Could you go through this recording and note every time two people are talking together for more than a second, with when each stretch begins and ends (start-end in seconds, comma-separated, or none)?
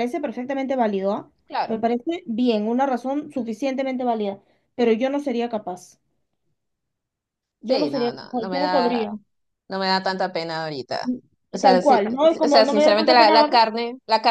7.7-9.1, 11.6-13.5